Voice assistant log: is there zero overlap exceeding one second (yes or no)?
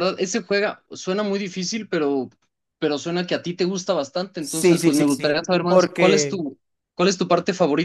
no